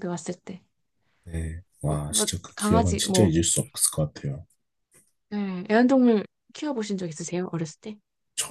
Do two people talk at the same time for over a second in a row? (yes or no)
yes